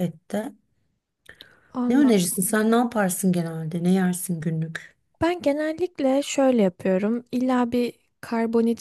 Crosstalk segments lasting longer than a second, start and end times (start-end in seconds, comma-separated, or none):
none